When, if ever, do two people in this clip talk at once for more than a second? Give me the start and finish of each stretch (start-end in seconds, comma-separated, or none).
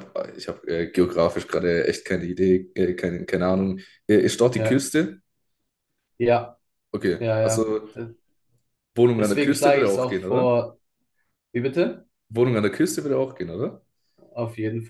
9.2-10.6